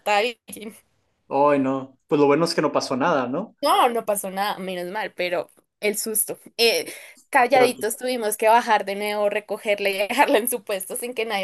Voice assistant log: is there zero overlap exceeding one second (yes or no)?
yes